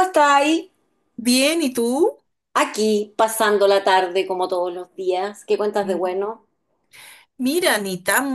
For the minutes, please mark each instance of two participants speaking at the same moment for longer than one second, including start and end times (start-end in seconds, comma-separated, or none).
none